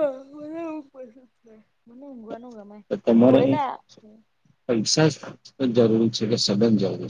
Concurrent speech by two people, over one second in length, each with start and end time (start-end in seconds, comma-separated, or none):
none